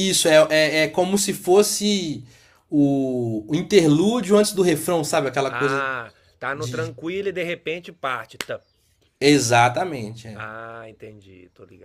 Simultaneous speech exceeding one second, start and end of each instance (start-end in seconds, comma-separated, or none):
none